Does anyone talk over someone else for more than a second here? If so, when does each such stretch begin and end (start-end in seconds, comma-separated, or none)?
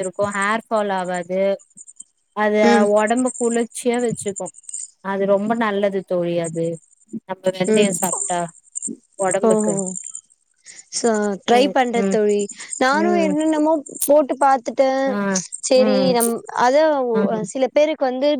none